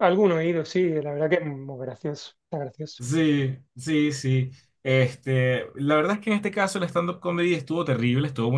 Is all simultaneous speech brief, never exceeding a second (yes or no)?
yes